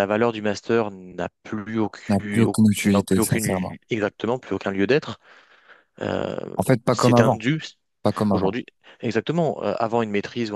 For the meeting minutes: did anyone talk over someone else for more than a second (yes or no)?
yes